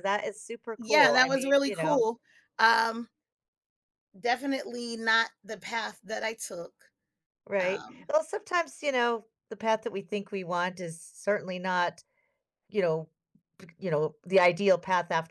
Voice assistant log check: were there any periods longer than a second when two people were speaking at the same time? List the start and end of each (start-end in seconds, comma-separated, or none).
0.8-2.0